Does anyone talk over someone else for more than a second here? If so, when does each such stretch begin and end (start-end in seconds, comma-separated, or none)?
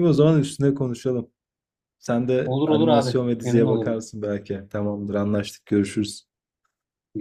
2.5-4.0